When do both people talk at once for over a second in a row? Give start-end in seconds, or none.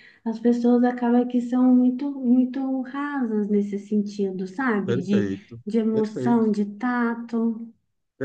4.8-6.5